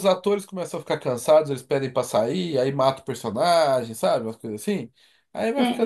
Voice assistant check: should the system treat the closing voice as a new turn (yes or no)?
yes